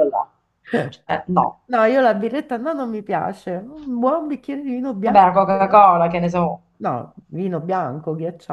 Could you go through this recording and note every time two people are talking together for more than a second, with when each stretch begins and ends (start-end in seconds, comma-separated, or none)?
none